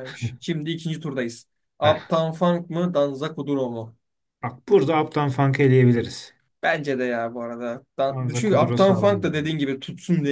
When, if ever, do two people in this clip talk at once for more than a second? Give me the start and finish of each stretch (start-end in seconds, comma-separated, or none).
8.1-9.3